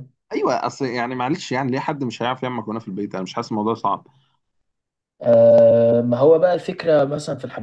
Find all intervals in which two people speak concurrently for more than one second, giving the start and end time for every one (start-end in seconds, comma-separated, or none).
none